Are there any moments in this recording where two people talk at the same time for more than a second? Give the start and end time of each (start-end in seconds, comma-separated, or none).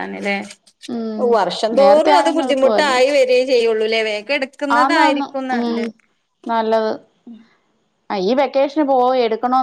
1.8-3.0